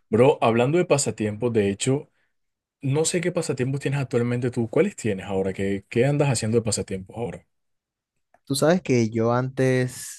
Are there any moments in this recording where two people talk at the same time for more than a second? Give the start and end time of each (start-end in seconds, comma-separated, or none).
none